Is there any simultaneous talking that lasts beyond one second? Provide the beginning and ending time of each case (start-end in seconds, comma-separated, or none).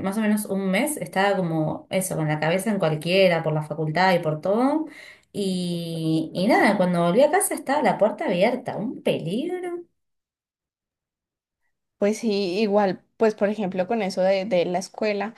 none